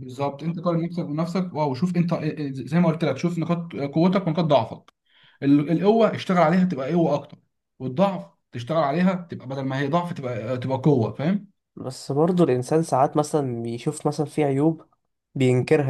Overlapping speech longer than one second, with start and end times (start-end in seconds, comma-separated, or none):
none